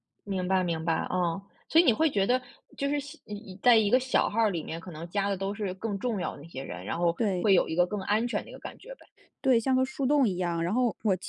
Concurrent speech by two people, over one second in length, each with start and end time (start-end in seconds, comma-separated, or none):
none